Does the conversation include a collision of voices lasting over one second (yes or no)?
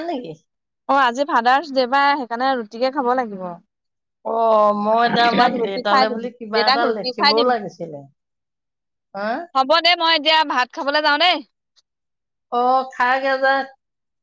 yes